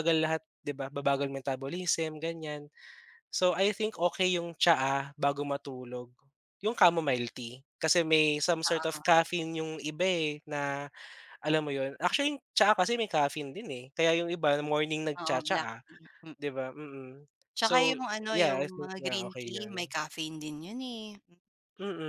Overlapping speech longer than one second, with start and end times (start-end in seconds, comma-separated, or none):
17.6-19.9